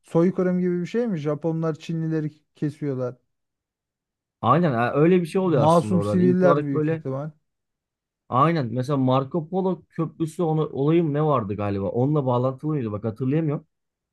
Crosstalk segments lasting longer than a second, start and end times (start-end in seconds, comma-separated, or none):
5.4-7.0